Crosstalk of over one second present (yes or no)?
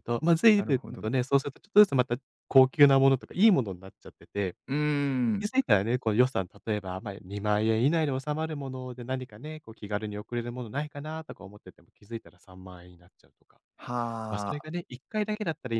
no